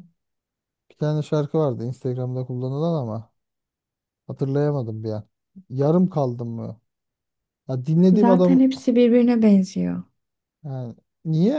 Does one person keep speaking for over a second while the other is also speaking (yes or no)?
no